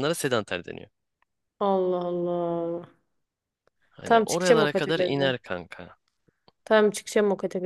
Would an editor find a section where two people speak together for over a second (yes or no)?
yes